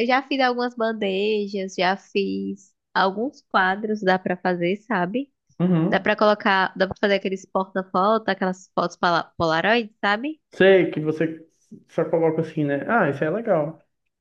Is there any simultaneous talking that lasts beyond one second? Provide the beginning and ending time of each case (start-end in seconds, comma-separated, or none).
none